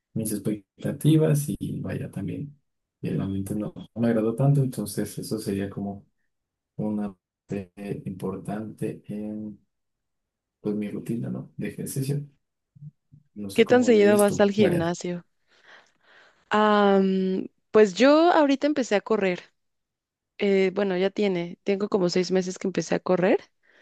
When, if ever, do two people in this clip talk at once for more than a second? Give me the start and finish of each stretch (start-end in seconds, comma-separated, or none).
13.5-14.9